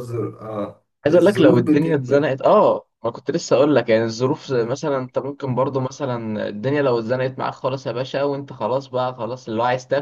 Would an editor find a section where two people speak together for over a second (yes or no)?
yes